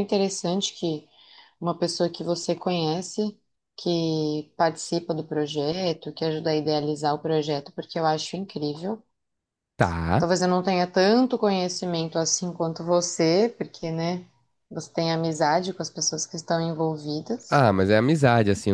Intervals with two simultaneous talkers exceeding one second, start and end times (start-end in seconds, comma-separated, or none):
none